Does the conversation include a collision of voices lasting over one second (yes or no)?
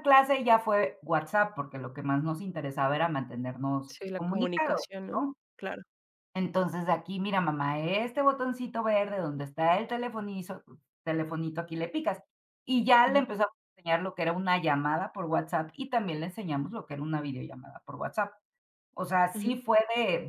yes